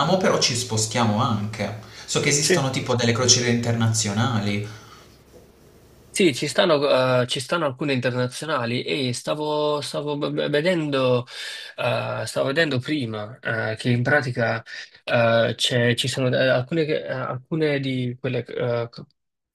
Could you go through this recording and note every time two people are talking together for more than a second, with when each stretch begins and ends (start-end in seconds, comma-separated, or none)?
none